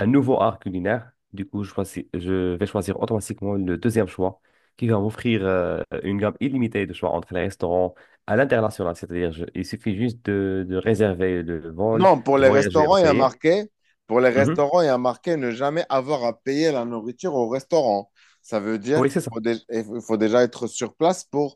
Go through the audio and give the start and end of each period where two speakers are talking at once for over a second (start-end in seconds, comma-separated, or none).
11.9-13.3